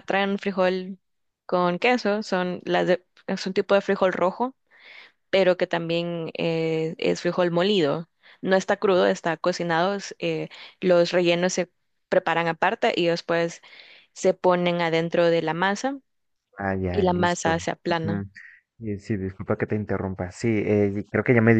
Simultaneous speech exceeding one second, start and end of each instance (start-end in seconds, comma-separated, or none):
16.9-18.2